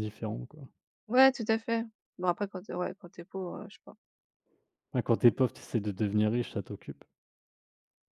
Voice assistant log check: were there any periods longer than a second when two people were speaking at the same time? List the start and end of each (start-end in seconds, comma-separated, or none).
none